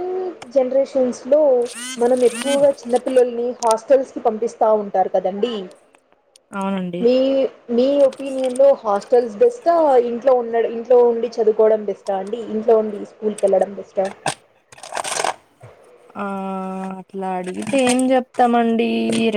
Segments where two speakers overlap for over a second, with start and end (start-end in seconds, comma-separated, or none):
none